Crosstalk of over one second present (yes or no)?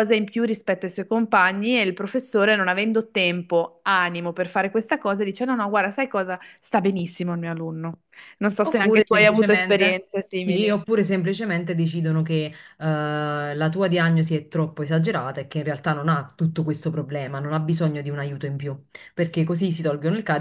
yes